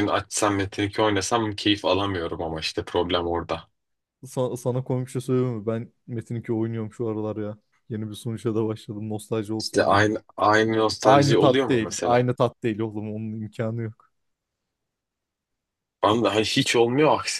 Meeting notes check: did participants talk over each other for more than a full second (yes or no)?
yes